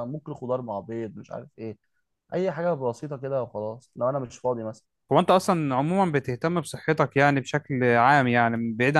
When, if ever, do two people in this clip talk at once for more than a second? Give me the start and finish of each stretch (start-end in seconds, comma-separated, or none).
none